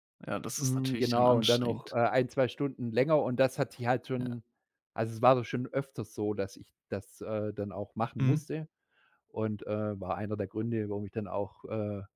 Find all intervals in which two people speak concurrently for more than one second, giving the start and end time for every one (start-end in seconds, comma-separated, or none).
0.6-1.9